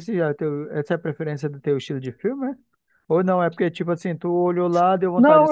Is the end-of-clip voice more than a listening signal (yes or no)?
yes